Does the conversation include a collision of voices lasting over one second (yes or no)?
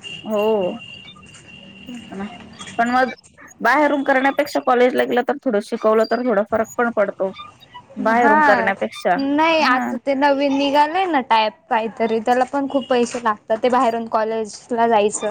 no